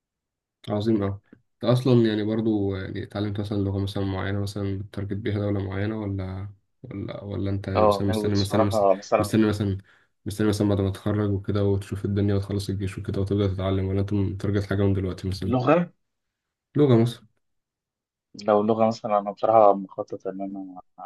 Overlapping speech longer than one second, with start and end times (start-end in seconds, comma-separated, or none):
7.8-9.3